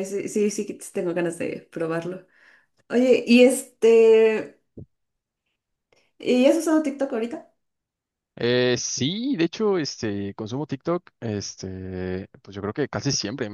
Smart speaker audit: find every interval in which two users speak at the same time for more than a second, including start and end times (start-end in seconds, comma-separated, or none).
none